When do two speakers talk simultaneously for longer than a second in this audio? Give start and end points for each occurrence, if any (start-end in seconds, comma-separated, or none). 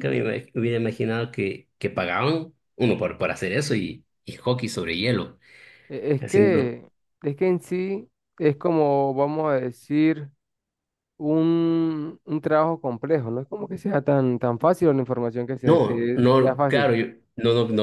15.6-16.9